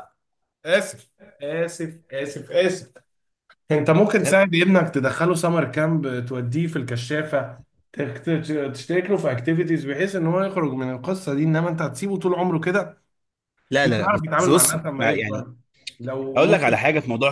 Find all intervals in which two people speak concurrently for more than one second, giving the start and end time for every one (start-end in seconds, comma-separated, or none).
13.8-15.5